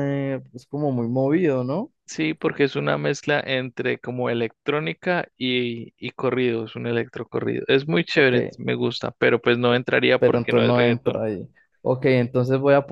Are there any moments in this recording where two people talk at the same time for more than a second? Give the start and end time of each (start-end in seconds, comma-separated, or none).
9.7-11.2